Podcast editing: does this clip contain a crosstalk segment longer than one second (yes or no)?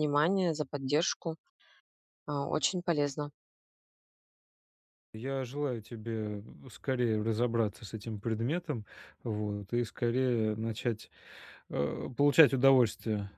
no